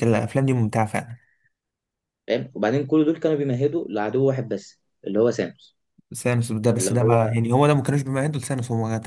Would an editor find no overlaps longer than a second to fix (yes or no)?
yes